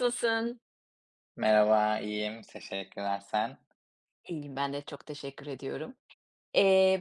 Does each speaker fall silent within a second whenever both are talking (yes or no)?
yes